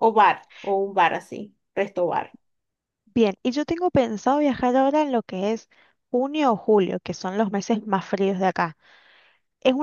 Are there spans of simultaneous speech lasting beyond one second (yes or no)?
no